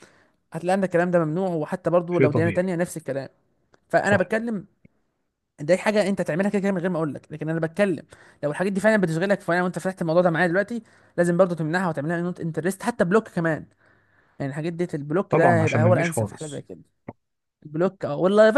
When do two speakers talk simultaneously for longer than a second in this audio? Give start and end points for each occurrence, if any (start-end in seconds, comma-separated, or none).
15.3-16.6